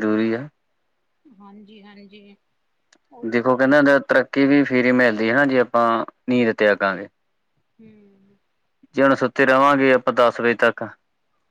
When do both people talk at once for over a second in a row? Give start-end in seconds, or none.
none